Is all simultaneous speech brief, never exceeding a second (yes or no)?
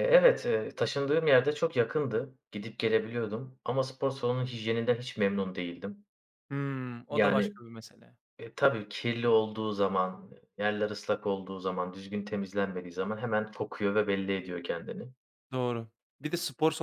yes